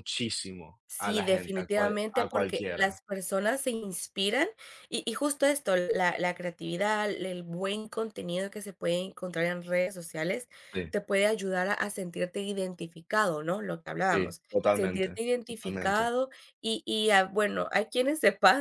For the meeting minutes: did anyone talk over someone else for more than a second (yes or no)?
yes